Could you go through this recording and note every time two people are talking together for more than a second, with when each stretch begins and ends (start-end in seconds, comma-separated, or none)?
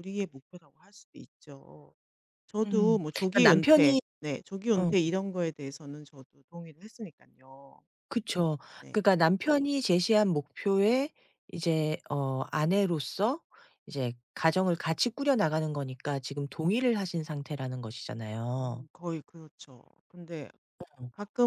2.6-4.0